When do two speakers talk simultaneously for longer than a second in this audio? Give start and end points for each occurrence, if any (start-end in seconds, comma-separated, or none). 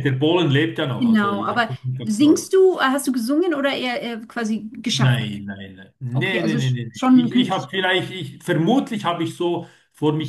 1.0-2.6, 6.1-7.7